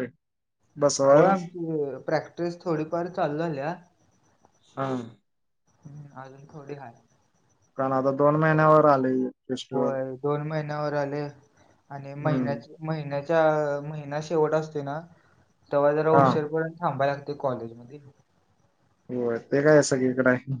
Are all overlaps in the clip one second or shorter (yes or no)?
yes